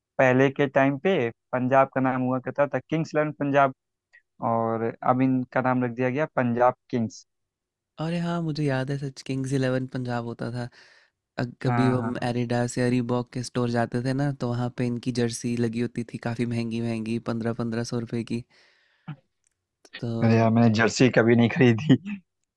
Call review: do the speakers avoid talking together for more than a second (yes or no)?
yes